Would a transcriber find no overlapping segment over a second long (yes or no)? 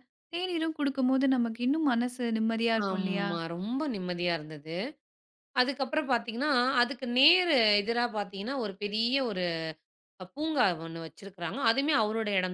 yes